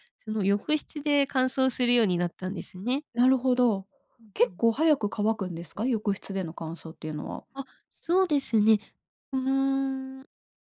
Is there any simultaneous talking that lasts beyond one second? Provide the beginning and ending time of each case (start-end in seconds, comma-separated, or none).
none